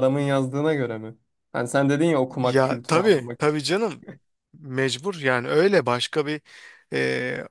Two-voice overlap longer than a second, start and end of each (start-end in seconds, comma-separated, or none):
2.3-3.6